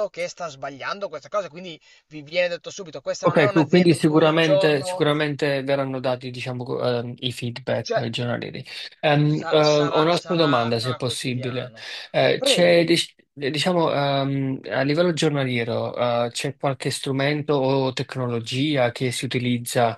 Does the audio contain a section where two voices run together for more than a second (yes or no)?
yes